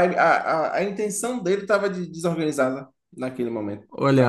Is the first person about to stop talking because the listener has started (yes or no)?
yes